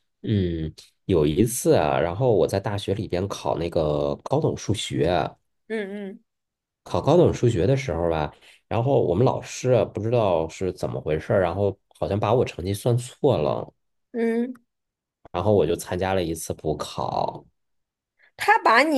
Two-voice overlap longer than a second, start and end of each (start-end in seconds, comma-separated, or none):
none